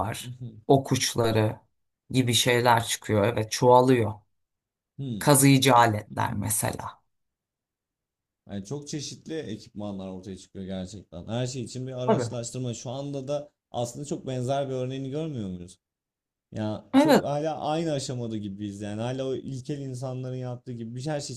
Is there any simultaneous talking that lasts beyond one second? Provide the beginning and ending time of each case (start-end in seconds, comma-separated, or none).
none